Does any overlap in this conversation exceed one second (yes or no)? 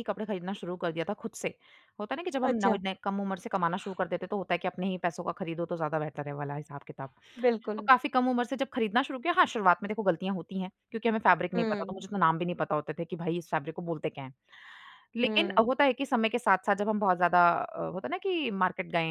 no